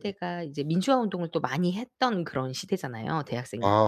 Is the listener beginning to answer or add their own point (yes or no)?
yes